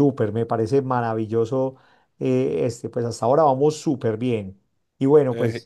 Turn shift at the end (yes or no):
no